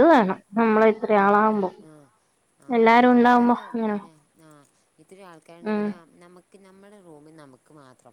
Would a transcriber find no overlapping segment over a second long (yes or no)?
yes